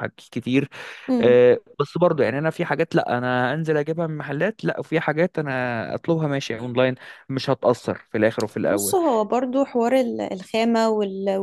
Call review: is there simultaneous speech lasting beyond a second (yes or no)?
no